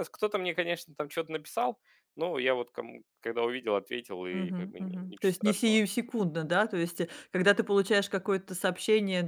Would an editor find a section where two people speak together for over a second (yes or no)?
yes